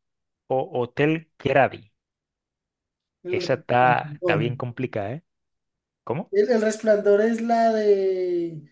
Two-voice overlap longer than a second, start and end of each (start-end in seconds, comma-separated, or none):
3.3-4.5